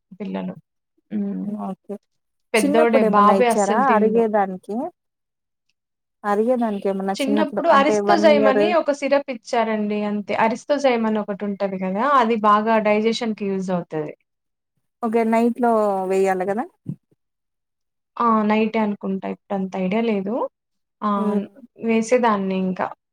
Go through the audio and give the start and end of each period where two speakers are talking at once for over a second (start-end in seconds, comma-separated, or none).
2.6-4.1